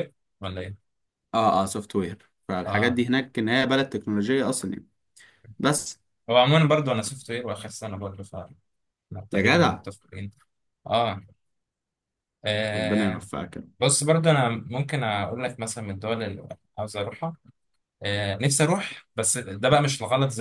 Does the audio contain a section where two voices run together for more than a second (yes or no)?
no